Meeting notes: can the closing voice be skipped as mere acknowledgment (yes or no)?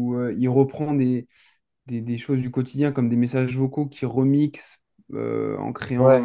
yes